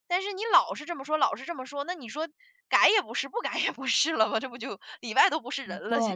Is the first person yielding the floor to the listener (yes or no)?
yes